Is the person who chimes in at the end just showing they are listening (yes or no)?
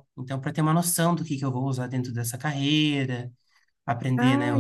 yes